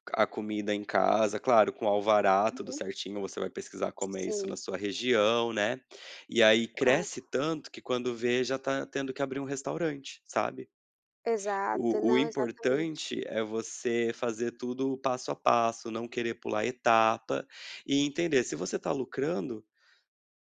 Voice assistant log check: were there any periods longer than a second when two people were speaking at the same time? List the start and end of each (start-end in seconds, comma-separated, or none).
11.7-13.1